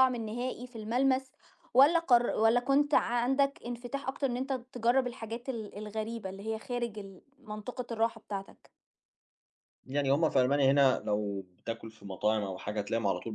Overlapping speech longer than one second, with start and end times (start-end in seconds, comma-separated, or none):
none